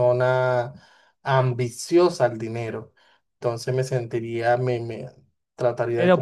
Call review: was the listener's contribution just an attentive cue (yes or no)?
no